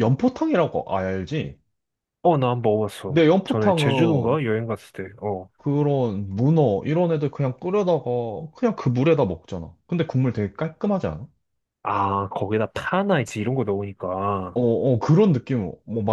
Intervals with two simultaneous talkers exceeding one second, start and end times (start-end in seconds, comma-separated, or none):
3.1-4.4